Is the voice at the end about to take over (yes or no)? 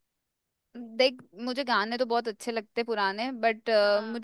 no